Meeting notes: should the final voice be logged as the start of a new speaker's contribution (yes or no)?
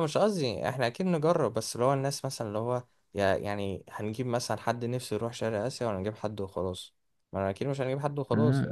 yes